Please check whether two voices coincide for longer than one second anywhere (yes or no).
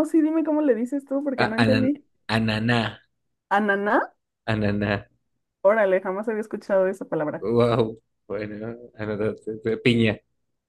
no